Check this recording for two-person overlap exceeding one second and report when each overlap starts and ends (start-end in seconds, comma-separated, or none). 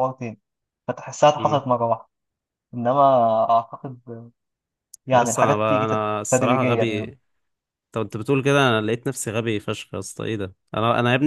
5.1-7.0